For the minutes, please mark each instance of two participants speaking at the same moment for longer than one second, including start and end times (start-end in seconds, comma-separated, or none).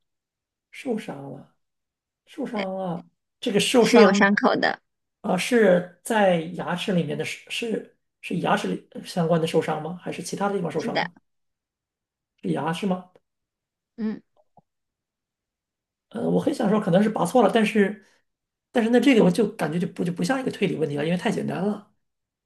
none